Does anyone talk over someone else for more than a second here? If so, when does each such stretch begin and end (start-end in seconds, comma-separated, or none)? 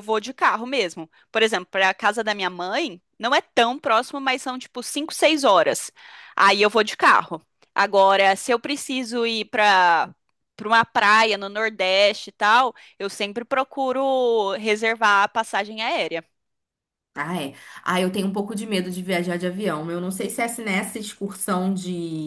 none